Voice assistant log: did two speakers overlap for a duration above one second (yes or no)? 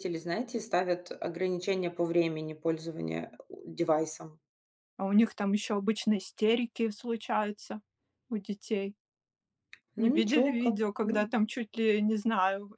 yes